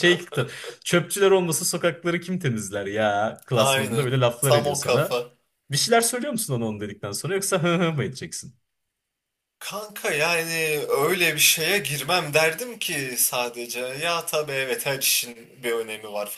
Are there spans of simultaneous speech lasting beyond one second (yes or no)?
yes